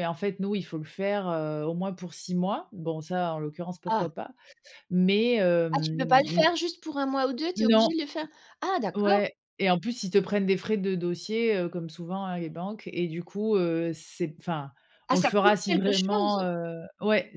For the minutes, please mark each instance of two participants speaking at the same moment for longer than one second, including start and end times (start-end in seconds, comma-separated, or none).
15.1-16.4